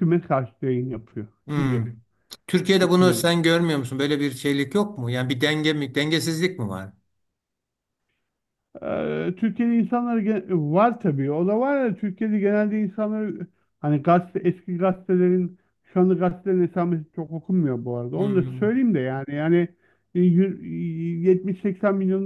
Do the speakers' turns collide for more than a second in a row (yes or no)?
no